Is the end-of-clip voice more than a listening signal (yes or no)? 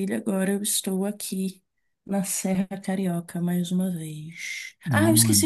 no